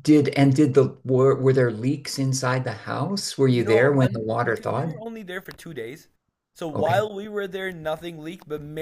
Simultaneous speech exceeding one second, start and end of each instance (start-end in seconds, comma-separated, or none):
3.5-5.0